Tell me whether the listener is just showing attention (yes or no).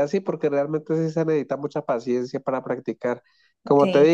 yes